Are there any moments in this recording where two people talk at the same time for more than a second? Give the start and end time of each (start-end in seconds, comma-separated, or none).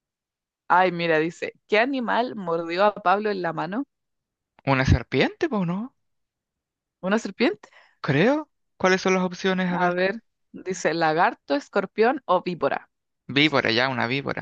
none